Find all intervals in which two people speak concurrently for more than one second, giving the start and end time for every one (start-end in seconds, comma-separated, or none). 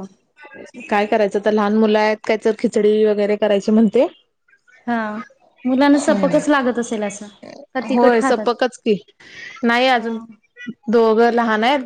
none